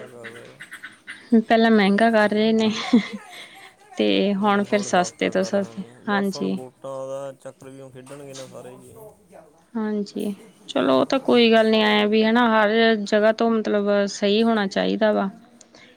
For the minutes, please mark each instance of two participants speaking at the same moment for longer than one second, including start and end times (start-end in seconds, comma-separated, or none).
4.4-6.6